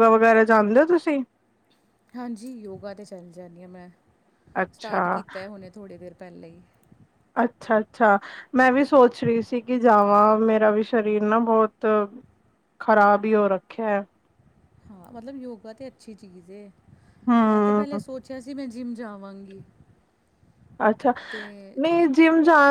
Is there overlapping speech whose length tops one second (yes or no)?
no